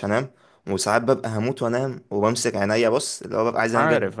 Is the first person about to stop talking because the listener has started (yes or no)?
no